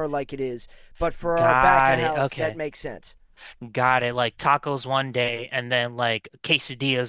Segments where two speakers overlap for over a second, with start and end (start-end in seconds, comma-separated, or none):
1.4-2.6